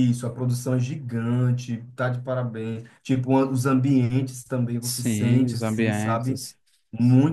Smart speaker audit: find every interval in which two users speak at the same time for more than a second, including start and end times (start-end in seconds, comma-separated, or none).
4.8-6.4